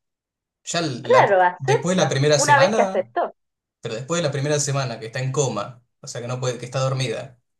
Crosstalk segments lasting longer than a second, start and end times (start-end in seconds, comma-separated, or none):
1.0-3.1